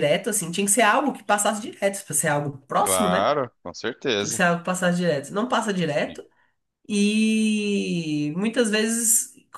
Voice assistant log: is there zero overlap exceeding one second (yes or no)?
yes